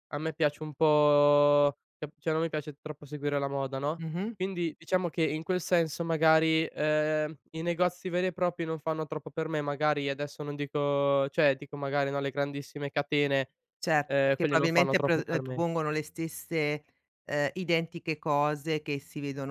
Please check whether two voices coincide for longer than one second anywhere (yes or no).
yes